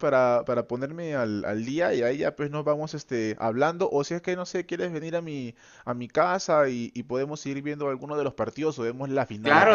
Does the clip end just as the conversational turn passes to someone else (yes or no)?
yes